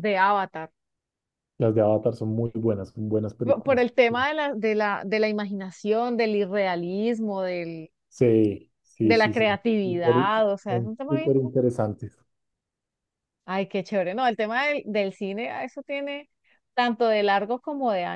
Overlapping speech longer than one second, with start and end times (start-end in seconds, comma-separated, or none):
9.0-11.4